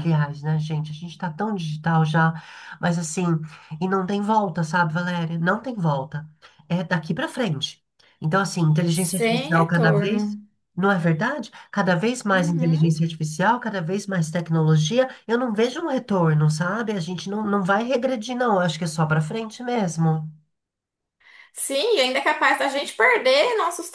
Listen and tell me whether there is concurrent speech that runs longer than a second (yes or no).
yes